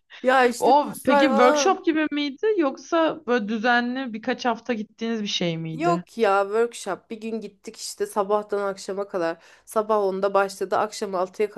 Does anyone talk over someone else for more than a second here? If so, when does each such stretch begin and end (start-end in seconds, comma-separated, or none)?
0.6-1.8